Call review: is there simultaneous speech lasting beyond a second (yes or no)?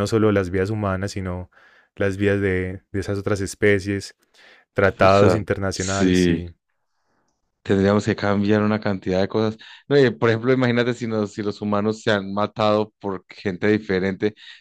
yes